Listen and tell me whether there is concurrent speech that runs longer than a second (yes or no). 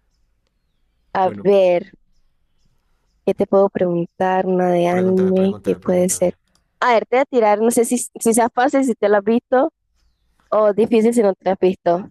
yes